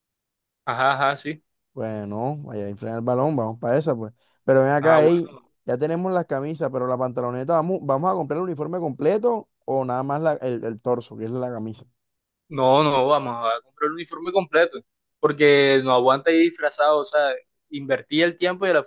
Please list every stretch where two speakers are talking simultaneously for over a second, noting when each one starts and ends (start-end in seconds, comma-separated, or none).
none